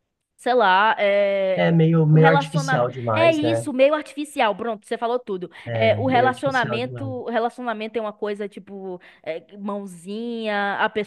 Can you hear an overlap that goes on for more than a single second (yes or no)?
yes